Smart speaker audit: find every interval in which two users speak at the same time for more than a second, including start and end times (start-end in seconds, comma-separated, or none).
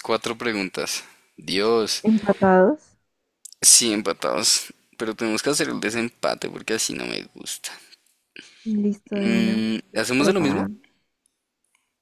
9.1-10.7